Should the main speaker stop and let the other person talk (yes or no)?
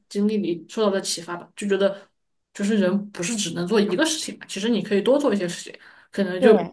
no